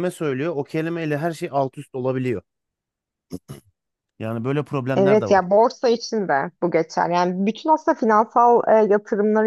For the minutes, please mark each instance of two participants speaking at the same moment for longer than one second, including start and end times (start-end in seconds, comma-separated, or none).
none